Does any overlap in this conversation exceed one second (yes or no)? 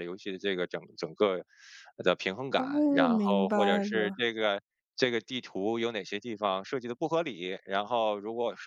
yes